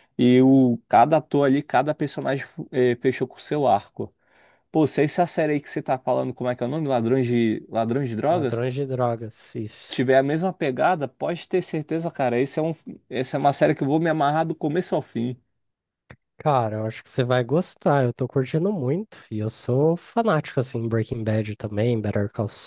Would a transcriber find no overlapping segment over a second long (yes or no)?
yes